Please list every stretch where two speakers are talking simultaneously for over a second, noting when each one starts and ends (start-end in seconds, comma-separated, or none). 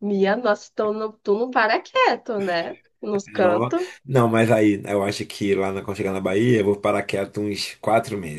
none